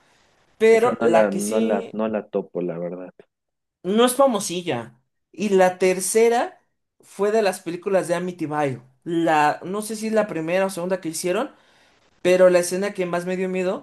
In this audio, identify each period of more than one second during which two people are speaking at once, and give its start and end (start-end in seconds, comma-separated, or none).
0.7-1.9